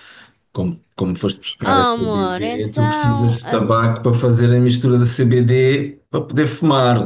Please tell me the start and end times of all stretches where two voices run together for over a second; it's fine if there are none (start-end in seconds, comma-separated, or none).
1.6-3.6